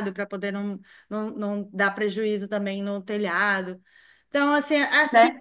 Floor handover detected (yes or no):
no